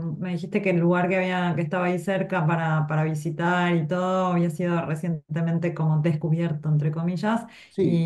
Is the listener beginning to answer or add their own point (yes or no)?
no